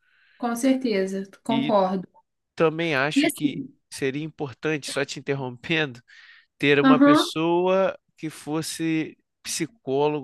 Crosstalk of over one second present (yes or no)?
no